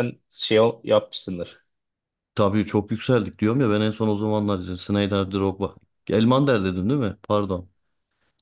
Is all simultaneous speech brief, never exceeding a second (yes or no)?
yes